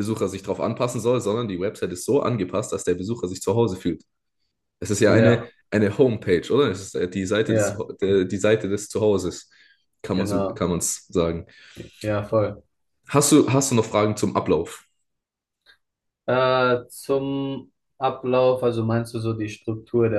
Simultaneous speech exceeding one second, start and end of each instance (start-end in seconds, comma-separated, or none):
none